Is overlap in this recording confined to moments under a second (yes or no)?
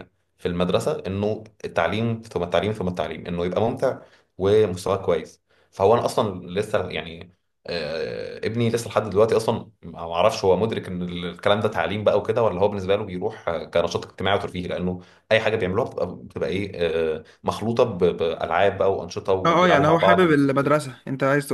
no